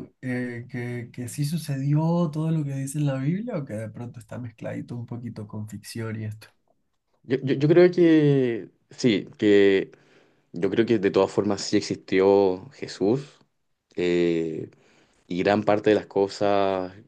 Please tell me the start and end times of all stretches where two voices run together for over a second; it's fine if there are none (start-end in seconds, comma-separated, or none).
none